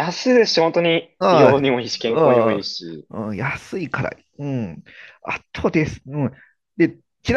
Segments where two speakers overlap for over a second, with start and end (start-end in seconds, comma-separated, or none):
1.2-3.1